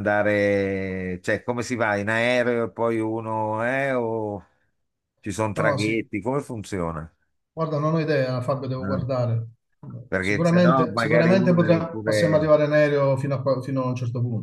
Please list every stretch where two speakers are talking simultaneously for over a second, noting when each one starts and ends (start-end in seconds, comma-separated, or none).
10.2-12.5